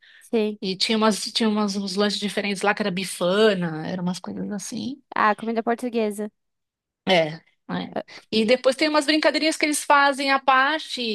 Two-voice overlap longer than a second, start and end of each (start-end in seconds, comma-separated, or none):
none